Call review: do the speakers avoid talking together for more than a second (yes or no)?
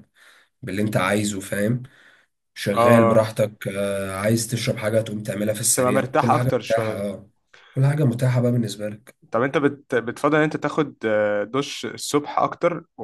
no